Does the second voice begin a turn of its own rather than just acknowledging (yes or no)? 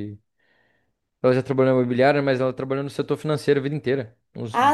yes